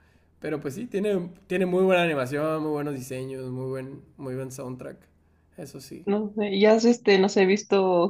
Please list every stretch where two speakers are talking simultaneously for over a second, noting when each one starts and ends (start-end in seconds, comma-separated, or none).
none